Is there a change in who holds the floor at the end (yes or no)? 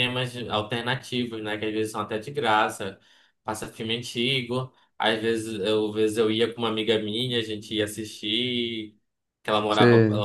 no